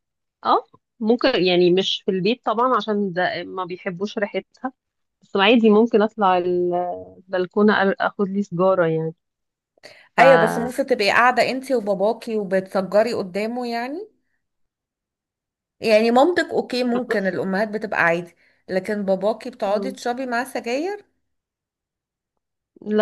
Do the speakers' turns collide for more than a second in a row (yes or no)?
no